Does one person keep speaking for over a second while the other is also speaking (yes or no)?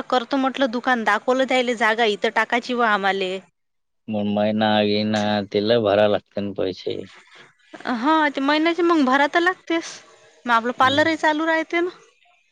no